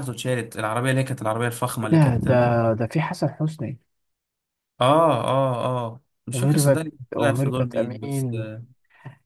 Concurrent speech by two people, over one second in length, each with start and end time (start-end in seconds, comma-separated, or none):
6.3-8.3